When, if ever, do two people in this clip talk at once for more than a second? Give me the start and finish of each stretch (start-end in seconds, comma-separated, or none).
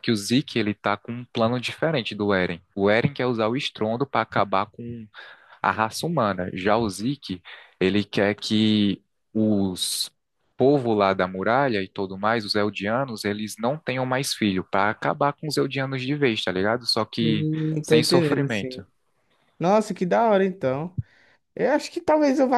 17.2-18.8